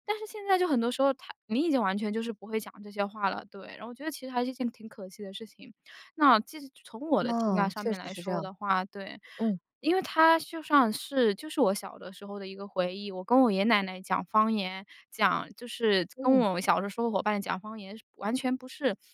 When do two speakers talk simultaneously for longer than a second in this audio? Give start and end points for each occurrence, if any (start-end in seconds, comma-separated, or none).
7.2-8.5